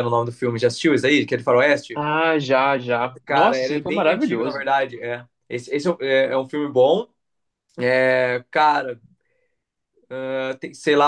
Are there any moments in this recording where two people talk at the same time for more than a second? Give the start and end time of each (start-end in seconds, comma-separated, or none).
3.2-4.7